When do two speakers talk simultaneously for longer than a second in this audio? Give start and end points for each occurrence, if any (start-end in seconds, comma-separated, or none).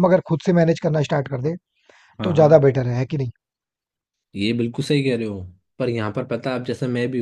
none